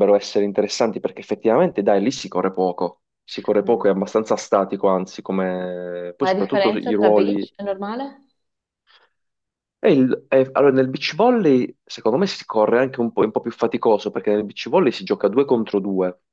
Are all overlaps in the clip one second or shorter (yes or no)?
no